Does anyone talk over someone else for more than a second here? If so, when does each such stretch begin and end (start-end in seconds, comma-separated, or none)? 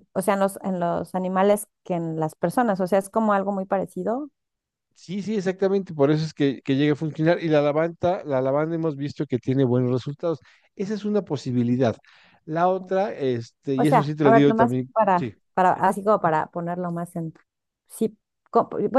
13.8-15.3